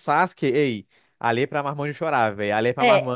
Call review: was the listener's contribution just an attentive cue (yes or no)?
no